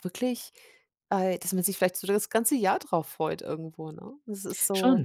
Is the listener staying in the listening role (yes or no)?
no